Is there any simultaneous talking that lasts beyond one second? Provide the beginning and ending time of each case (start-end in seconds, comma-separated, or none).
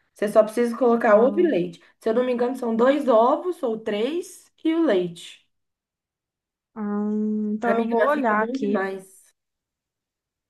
7.6-8.8